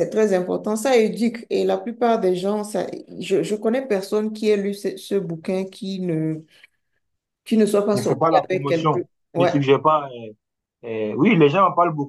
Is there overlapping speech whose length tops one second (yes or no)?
yes